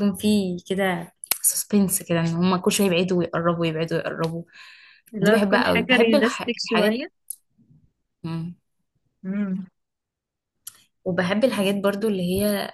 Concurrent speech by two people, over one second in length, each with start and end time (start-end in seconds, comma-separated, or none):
5.2-7.0